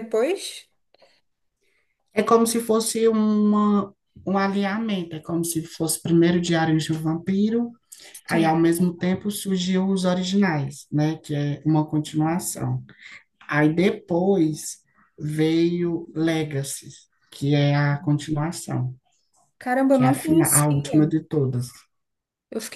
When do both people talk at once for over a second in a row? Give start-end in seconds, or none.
19.9-21.1